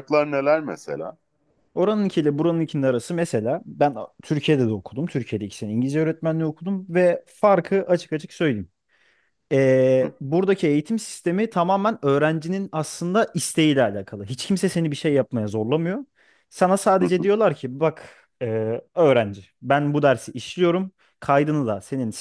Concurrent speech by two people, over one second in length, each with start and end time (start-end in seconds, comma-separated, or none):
none